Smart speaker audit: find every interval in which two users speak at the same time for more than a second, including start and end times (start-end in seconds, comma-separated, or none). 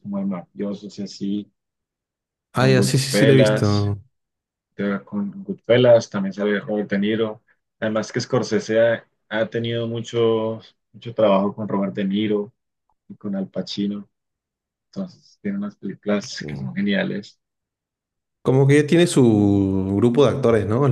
2.5-3.9